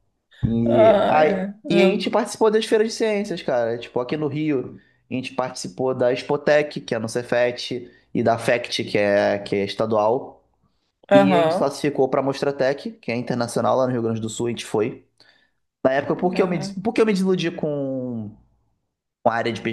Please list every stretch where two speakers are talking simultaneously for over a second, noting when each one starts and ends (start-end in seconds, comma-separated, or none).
0.7-2.0